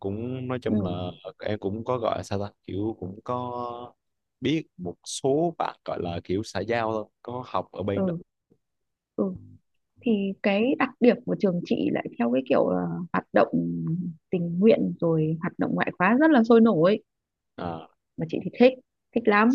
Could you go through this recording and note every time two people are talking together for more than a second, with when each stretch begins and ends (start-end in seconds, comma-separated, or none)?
none